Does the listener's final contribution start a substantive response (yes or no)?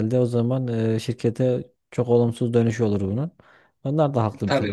yes